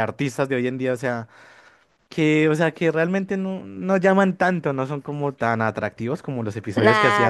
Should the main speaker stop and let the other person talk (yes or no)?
yes